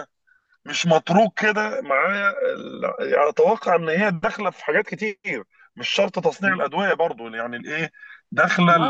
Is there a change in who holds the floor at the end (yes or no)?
no